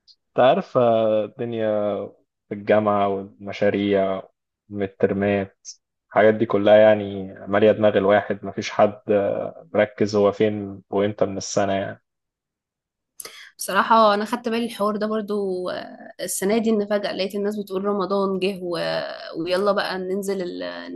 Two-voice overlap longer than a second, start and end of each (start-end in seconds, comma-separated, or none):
none